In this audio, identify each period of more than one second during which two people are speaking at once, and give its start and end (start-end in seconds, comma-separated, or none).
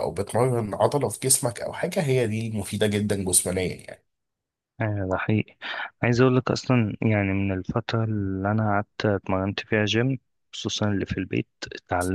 none